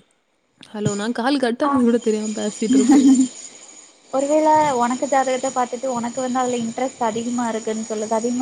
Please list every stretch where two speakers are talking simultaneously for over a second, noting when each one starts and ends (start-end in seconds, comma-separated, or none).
none